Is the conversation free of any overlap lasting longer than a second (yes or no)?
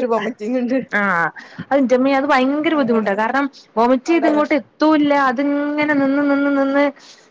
yes